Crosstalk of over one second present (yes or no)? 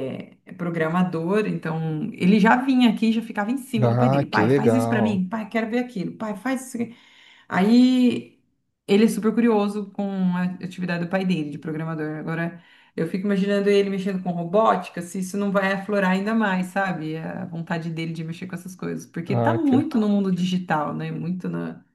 yes